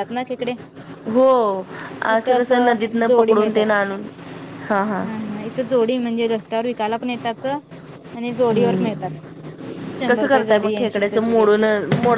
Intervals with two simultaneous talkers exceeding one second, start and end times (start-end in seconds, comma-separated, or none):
10.1-11.6